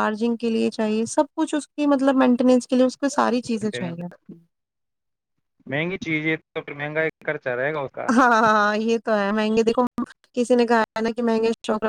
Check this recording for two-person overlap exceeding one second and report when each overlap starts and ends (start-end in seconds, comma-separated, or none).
none